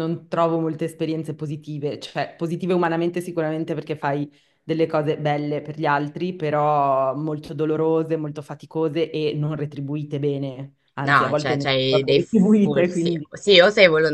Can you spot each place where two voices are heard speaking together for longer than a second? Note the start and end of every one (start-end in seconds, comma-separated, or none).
11.0-13.3